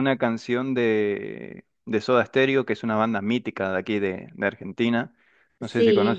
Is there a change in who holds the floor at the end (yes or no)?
yes